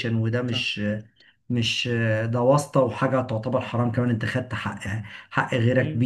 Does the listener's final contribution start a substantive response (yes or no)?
yes